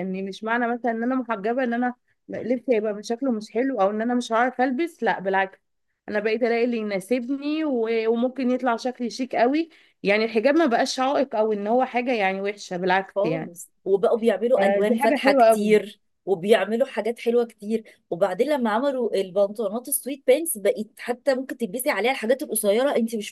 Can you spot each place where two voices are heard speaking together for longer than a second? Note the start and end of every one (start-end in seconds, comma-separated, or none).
14.6-15.8